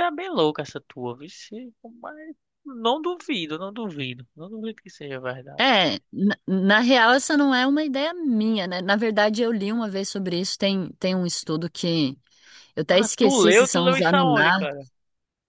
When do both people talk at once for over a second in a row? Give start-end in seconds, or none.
12.9-14.7